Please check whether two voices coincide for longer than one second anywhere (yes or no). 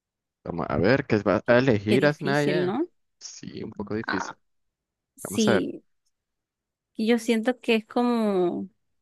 yes